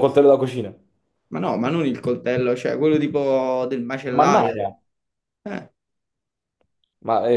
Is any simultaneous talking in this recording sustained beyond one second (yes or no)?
no